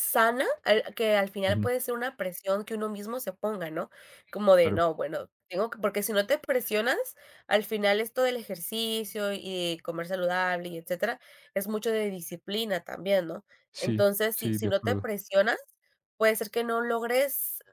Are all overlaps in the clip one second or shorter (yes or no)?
no